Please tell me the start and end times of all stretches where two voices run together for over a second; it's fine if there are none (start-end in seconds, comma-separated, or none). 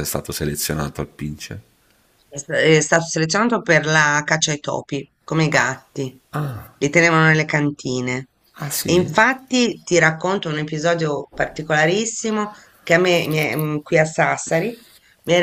none